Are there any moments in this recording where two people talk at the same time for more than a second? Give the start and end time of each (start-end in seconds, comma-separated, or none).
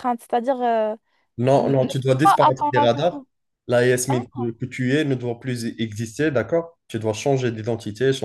1.5-3.2